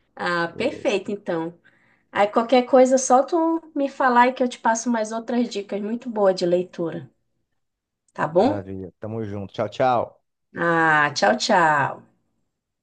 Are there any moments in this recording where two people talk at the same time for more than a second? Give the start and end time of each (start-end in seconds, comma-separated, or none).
none